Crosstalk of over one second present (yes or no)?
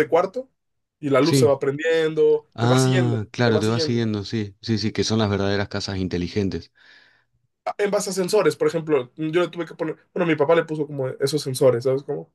yes